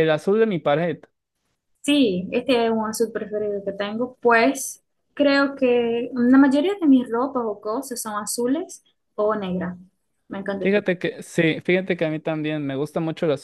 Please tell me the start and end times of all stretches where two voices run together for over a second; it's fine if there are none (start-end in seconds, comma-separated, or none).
none